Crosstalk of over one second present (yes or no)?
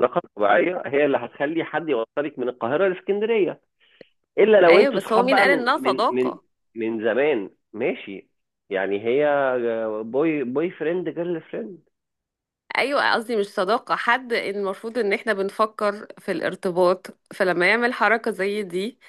yes